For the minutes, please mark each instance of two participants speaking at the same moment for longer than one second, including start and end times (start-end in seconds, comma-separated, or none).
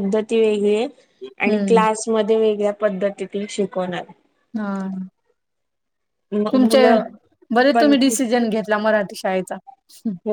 none